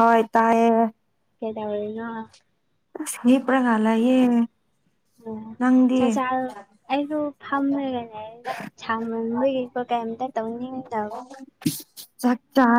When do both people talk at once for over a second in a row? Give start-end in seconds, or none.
none